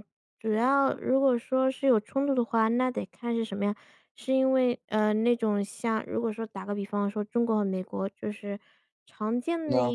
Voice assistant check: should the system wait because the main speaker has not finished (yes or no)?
yes